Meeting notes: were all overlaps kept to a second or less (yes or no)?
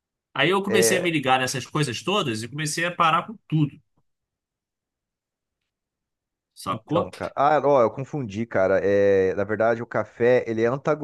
yes